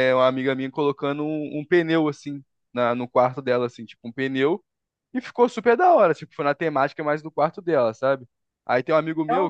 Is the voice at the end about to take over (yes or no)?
no